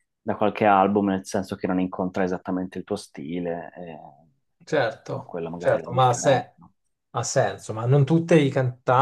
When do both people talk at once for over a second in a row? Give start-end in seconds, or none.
5.1-6.5